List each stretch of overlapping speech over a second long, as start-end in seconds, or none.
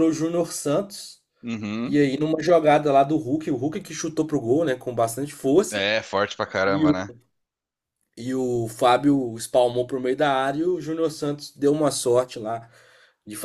none